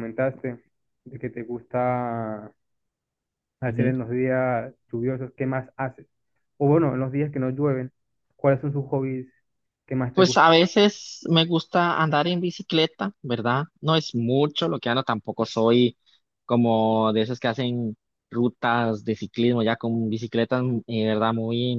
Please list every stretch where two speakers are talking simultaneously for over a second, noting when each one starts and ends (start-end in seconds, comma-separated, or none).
none